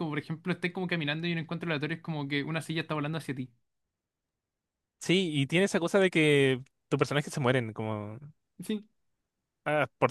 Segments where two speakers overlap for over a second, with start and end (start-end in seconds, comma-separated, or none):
none